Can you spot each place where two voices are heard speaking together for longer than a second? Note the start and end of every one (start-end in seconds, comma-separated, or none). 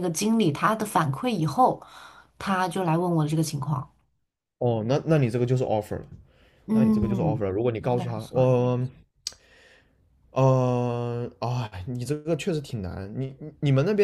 6.7-8.6